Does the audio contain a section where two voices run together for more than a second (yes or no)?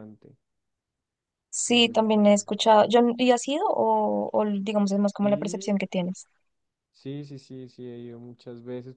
yes